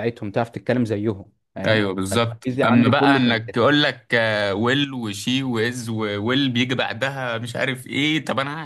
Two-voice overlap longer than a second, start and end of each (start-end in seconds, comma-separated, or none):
1.7-3.4